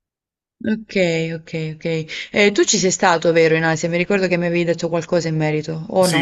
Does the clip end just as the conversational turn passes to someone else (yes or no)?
yes